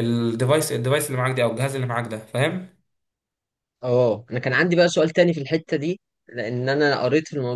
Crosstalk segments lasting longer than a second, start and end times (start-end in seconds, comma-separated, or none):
none